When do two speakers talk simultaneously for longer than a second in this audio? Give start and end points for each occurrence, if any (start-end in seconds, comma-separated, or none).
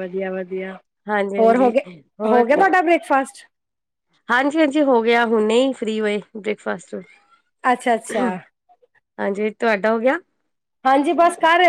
none